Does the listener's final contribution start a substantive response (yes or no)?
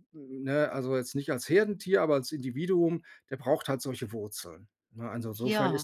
no